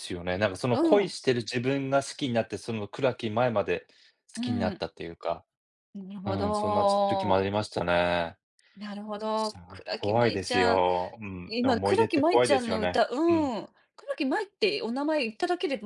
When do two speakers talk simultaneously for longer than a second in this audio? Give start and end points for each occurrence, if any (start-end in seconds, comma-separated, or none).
6.2-7.5, 9.3-10.8, 11.5-13.5